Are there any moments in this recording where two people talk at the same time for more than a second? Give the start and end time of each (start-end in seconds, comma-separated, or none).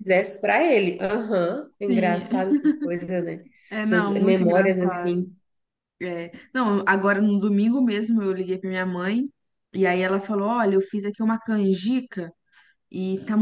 3.8-5.3